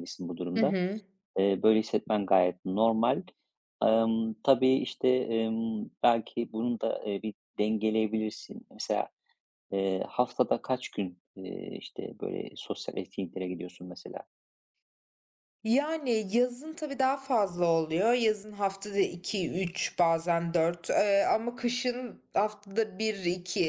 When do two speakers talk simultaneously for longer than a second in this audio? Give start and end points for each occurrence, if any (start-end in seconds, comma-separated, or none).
none